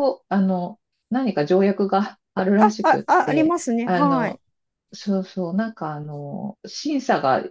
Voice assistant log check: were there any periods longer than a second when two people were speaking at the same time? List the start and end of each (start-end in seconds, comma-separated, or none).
2.6-4.4